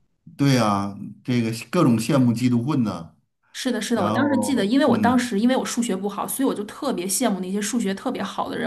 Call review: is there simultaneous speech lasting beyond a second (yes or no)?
yes